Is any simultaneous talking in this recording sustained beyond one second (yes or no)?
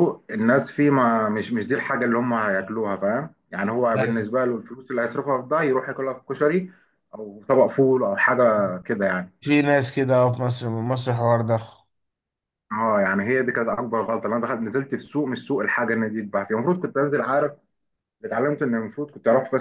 no